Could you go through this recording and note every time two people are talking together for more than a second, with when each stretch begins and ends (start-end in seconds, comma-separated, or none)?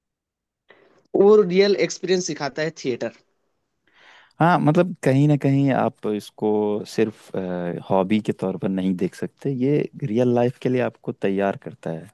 none